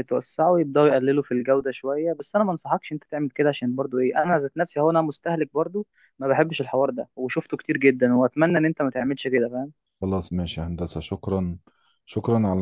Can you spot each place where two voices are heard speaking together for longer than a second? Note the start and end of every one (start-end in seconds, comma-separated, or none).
none